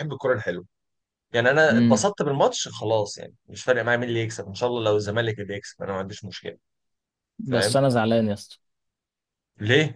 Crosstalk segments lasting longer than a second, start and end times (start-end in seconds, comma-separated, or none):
none